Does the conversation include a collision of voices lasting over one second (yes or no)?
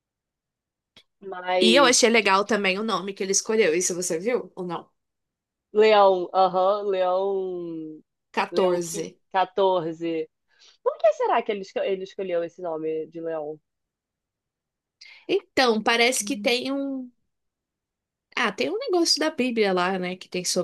no